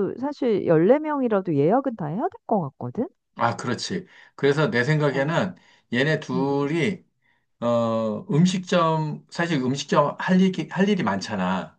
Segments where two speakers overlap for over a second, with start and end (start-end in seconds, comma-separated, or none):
none